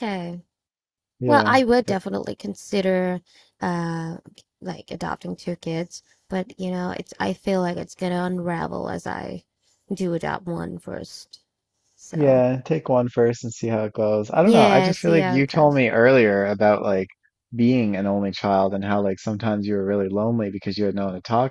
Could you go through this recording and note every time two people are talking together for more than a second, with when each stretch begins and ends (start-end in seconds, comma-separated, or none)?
14.4-15.8